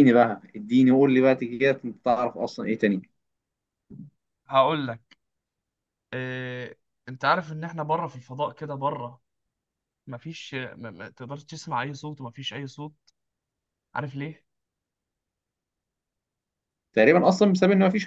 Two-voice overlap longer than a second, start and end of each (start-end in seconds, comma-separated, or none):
none